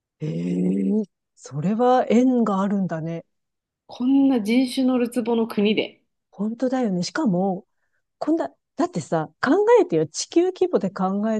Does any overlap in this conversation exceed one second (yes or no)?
no